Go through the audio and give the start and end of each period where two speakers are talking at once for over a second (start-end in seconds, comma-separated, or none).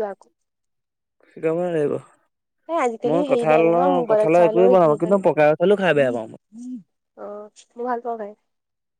3.1-4.9